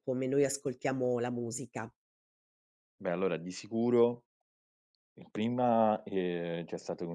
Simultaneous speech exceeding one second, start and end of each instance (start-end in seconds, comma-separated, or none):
none